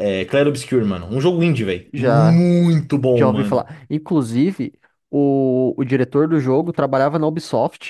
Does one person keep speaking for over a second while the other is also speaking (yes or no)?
no